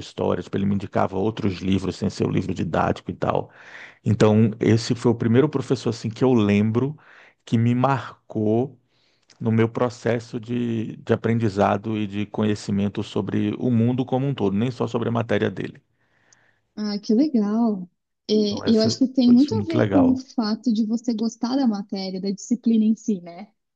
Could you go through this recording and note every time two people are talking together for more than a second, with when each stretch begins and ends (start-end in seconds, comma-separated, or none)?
18.7-20.2